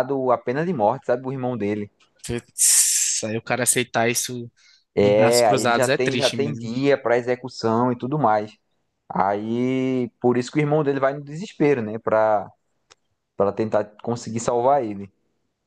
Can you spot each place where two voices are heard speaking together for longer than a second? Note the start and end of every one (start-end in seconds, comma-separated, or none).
5.0-6.7